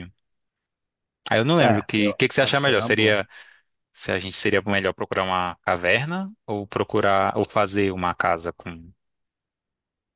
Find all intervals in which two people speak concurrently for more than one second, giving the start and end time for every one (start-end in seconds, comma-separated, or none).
1.6-3.2